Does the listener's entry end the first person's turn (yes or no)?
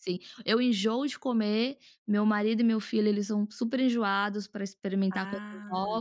no